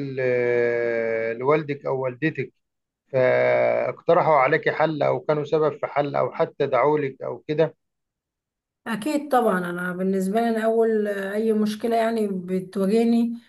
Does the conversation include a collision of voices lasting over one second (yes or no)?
no